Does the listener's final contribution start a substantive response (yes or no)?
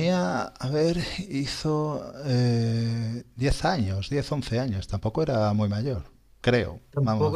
yes